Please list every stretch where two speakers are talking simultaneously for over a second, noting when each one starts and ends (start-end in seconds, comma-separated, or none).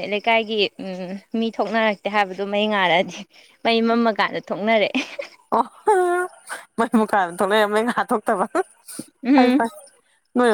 none